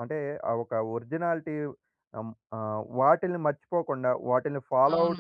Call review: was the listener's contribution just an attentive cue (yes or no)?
yes